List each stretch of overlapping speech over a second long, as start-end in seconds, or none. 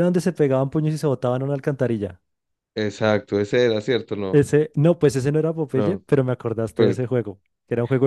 none